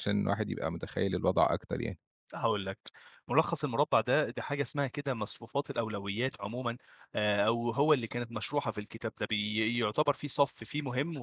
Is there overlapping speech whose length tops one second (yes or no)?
no